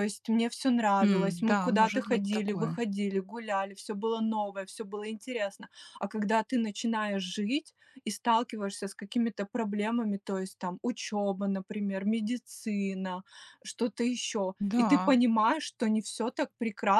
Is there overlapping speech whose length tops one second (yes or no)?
yes